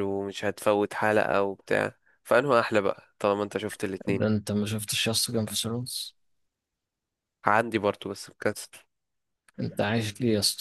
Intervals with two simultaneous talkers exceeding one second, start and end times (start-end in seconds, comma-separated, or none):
none